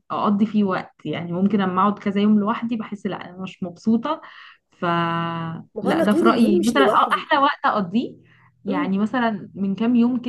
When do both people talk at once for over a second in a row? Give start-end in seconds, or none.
5.8-7.3